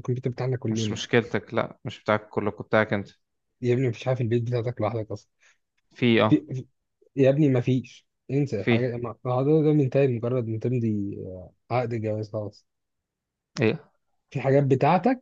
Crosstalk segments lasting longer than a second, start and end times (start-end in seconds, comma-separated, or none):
none